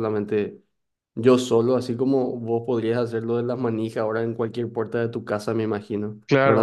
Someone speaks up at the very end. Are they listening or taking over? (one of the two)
taking over